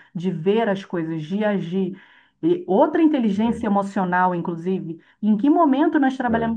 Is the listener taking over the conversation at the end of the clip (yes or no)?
no